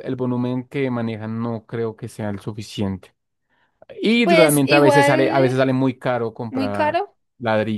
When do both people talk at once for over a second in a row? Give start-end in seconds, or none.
4.2-5.5